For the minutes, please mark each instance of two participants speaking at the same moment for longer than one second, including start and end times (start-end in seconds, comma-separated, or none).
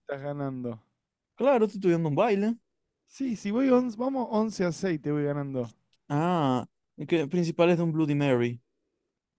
none